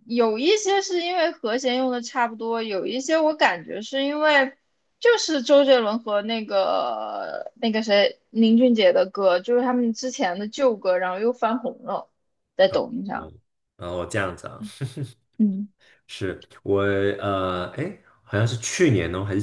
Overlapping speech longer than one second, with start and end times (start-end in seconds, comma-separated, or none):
none